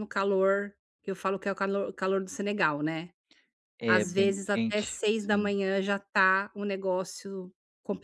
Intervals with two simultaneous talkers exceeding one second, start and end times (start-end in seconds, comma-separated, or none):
3.9-5.5